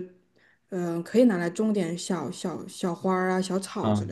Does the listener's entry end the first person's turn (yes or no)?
yes